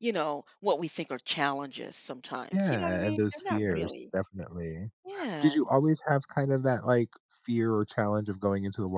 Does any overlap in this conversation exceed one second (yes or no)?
yes